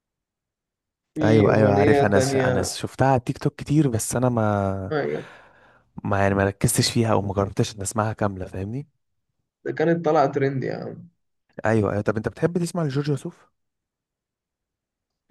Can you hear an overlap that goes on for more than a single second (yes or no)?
yes